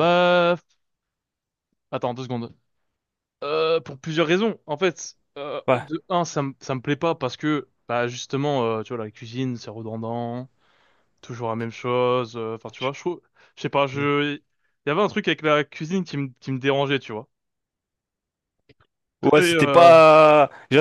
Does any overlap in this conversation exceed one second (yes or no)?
no